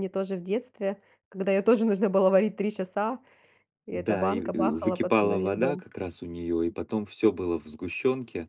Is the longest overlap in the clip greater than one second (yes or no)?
yes